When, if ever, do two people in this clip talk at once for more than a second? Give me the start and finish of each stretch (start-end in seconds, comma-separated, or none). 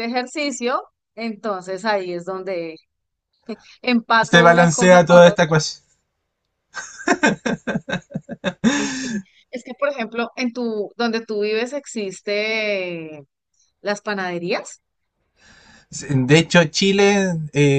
4.2-5.5